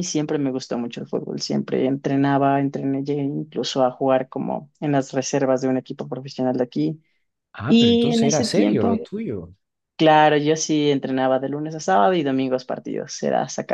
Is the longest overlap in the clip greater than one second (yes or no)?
yes